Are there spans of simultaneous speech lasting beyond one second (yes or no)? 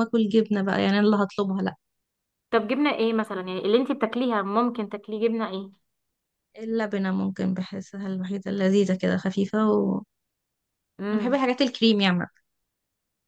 no